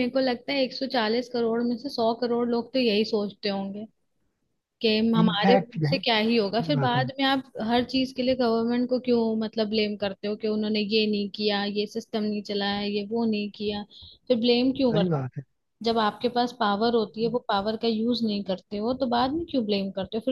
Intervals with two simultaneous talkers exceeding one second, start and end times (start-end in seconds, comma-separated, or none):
5.2-7.0